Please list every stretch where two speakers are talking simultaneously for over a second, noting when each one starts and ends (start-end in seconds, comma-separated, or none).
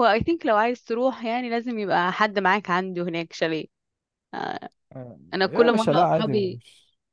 5.3-6.6